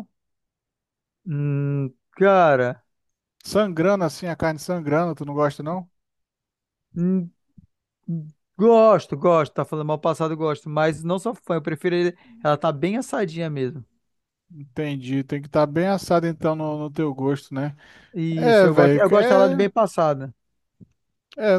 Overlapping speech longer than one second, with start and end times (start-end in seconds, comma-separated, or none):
18.4-19.7